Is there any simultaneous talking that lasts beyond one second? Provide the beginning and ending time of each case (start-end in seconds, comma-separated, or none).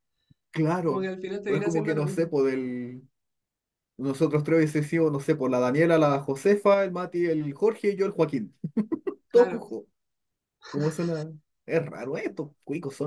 0.8-2.3